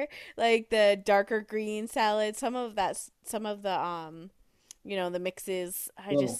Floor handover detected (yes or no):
no